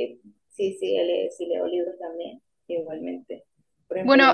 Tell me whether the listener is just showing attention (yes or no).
yes